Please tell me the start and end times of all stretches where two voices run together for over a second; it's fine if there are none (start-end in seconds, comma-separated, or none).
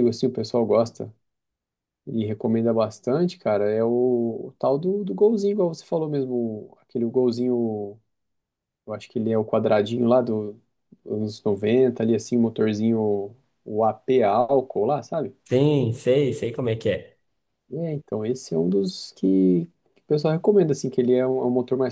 none